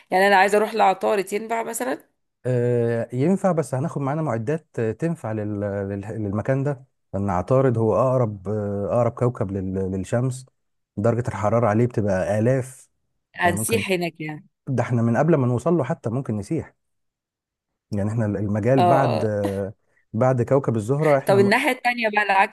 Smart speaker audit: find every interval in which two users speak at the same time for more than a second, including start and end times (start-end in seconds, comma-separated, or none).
none